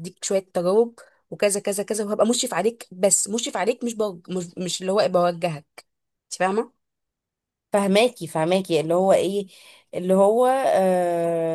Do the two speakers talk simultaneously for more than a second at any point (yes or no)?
no